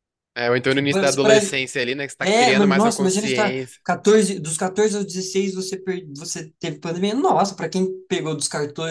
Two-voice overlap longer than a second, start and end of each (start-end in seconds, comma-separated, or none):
2.2-3.8